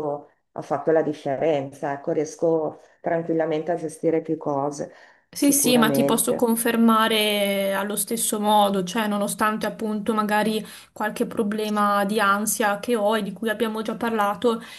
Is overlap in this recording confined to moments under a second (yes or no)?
no